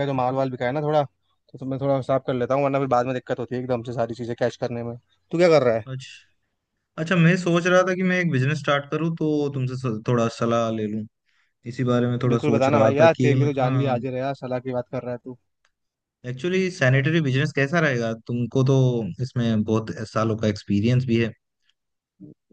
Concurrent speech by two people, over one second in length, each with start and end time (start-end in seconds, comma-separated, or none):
12.3-14.0